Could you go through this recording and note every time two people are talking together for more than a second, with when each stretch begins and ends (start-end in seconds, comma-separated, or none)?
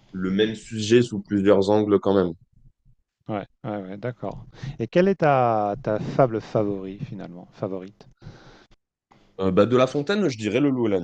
none